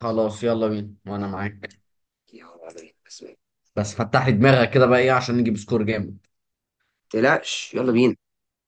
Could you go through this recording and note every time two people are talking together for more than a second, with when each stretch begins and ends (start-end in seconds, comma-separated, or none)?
none